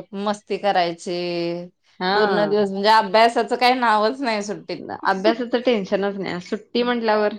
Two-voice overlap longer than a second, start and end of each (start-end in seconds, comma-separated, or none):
none